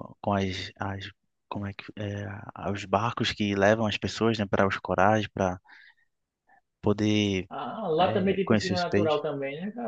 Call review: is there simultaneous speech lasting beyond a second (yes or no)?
yes